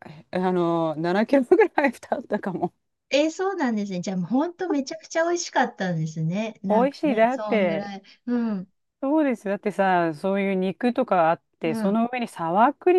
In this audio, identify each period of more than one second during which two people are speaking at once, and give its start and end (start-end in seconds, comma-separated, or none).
6.7-7.9